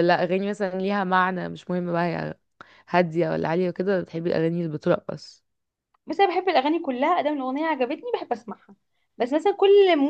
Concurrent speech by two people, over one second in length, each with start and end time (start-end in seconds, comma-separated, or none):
none